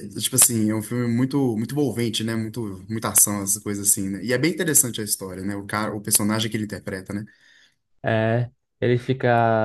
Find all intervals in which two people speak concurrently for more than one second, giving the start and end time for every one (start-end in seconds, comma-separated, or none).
none